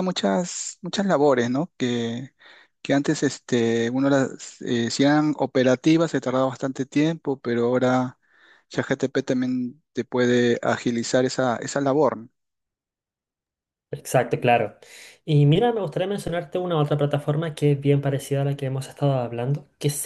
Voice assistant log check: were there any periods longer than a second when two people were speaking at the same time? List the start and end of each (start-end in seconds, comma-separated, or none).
none